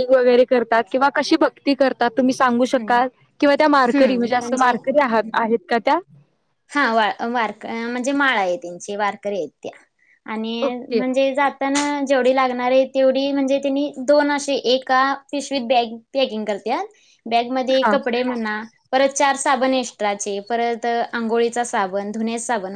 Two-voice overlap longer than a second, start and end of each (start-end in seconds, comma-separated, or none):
none